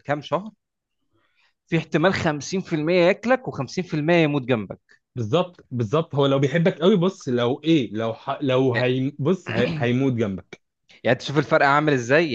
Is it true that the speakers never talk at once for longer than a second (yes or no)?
yes